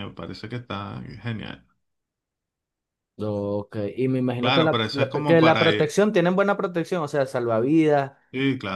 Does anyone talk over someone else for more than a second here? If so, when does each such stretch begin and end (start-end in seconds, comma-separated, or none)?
4.4-5.9